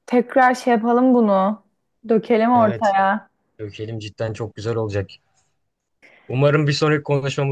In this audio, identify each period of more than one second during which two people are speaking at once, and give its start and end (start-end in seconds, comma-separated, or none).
none